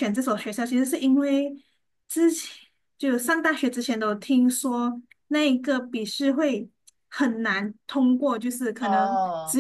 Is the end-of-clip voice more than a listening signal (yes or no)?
no